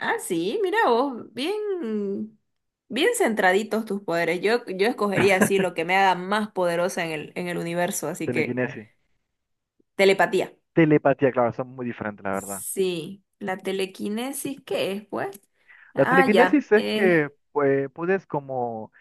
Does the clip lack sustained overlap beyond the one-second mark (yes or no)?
no